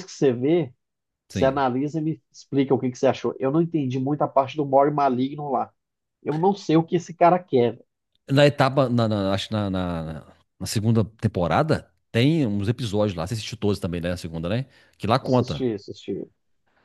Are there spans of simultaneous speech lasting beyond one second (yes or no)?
no